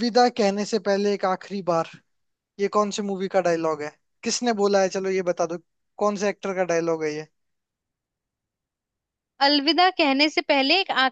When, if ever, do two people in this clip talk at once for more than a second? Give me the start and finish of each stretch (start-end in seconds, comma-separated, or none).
none